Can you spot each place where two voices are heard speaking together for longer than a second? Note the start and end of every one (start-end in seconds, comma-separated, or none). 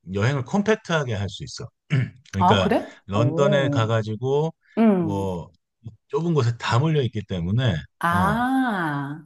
2.4-3.9